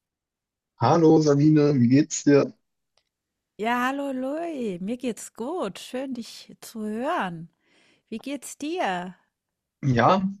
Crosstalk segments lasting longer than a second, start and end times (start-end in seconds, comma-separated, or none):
none